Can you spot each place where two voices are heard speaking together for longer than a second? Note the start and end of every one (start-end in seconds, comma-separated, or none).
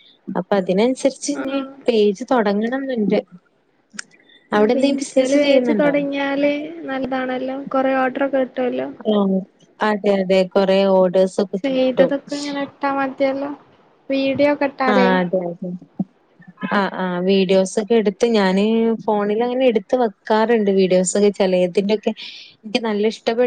none